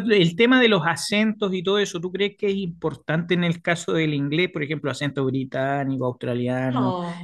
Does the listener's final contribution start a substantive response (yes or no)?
yes